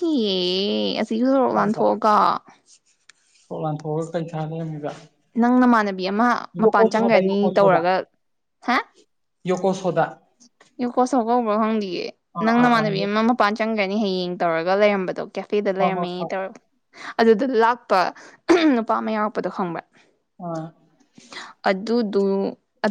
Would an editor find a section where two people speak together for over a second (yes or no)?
no